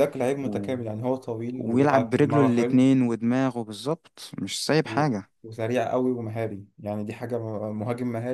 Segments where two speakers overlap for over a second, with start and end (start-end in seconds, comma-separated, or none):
1.6-2.8